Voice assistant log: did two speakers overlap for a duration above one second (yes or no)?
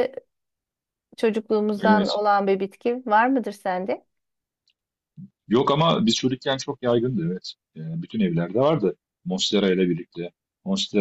no